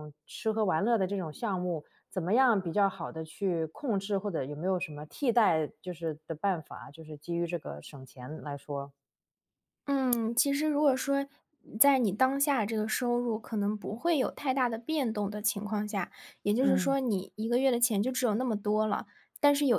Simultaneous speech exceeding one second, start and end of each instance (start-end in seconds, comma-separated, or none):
none